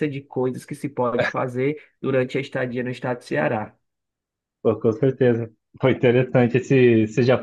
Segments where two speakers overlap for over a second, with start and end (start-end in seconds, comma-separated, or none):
none